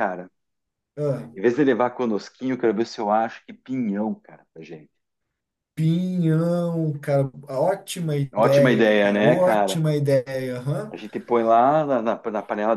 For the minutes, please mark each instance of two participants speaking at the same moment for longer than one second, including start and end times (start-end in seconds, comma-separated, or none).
8.3-9.8